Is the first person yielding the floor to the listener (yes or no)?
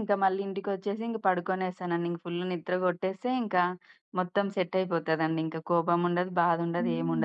no